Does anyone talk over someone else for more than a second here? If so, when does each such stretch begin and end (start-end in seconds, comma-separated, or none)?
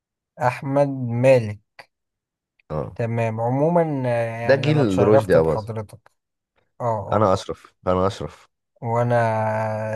4.5-5.7